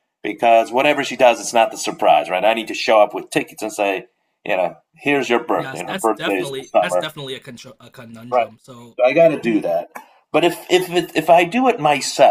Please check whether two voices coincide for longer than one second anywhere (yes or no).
yes